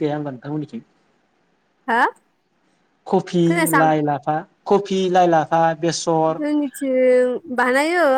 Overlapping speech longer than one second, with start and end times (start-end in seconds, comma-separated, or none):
none